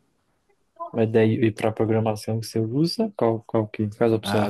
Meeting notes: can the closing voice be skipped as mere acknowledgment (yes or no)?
no